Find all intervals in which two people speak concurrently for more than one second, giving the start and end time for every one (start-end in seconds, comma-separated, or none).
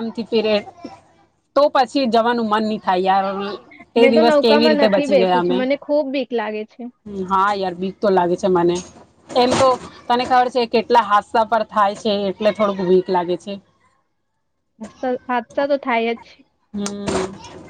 4.0-5.6